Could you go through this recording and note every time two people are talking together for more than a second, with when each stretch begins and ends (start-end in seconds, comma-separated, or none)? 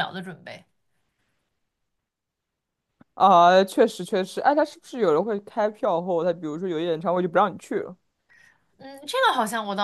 none